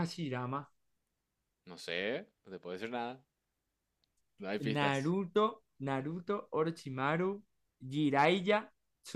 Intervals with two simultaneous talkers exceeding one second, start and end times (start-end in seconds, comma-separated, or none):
none